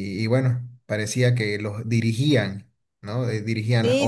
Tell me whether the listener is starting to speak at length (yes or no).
yes